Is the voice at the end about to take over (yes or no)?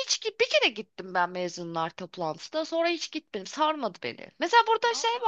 no